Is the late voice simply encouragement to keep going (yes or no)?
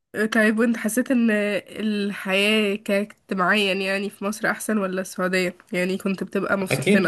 no